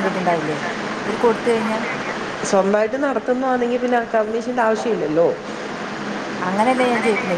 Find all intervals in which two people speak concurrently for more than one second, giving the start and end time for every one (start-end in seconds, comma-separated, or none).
none